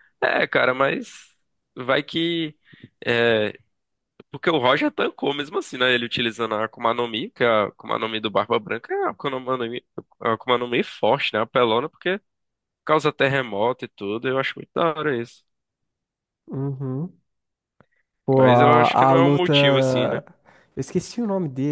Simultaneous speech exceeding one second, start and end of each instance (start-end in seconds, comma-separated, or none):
18.4-20.2